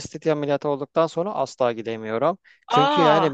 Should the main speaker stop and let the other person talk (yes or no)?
no